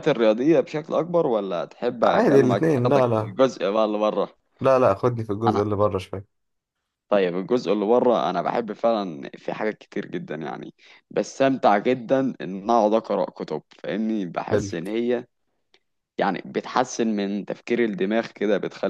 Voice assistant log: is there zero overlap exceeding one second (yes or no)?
no